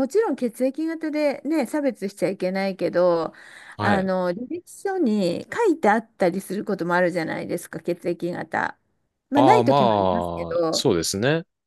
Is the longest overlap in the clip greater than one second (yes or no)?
yes